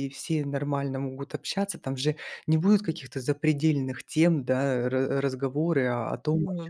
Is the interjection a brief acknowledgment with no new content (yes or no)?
yes